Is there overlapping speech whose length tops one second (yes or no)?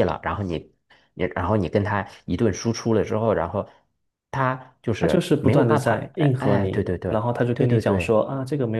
yes